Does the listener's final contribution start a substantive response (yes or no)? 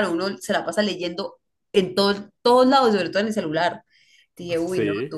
no